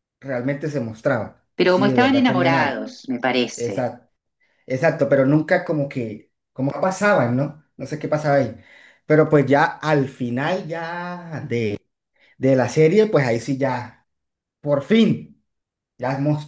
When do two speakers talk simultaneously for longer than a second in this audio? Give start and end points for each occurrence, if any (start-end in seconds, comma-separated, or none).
1.6-2.8